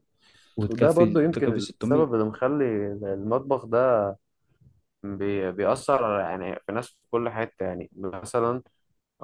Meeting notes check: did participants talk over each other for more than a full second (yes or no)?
yes